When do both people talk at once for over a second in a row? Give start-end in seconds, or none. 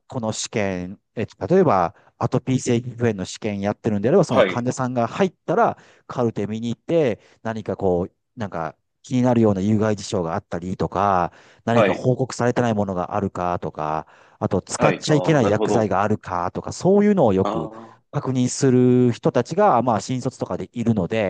14.8-15.9